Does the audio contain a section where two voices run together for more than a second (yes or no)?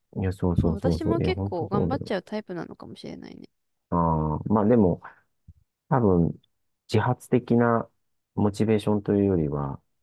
yes